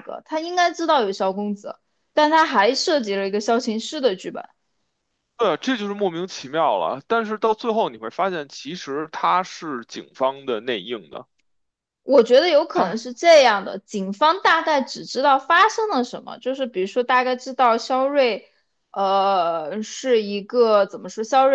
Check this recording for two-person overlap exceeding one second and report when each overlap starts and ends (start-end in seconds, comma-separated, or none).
none